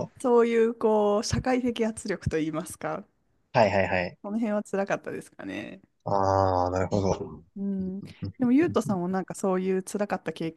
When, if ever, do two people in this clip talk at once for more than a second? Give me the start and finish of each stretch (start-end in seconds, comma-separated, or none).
none